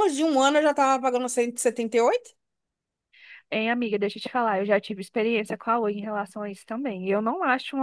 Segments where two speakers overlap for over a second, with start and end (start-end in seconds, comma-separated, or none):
none